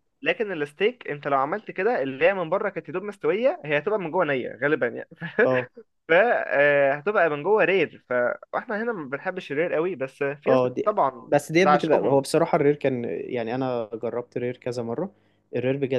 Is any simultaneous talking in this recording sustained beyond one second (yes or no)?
yes